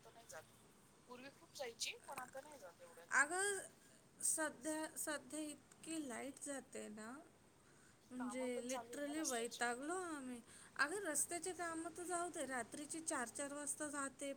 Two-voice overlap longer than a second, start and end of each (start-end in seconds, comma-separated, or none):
8.2-9.6